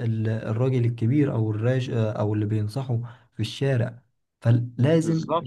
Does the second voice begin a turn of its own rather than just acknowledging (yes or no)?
no